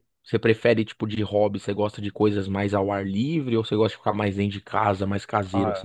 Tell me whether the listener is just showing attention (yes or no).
no